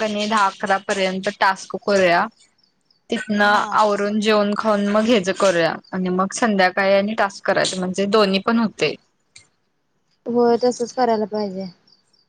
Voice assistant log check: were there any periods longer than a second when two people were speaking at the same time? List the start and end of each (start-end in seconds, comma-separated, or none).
none